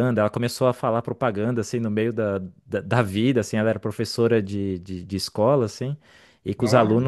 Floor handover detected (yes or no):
no